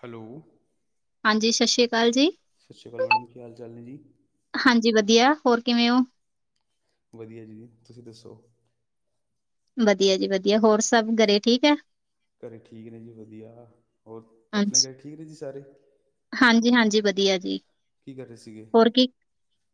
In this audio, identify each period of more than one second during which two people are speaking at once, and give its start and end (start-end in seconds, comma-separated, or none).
none